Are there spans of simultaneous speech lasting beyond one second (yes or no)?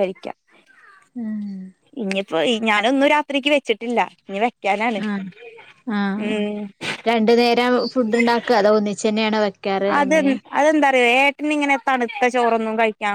no